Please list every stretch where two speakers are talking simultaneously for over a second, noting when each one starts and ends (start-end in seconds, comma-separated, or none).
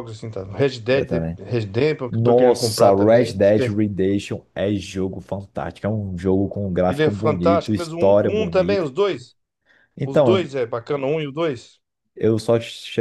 2.1-3.7, 6.9-8.9